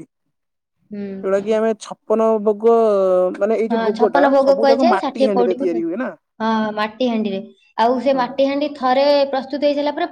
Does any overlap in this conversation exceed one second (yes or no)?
yes